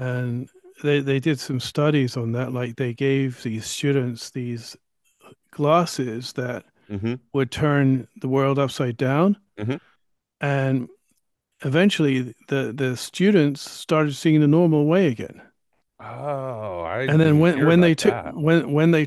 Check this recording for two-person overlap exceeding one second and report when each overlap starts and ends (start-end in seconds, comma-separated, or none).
17.1-18.3